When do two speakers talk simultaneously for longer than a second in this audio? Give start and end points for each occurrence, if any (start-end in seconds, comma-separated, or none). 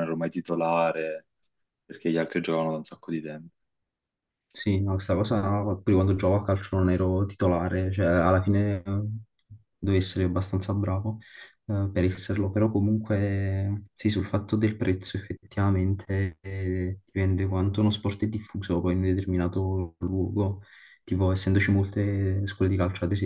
none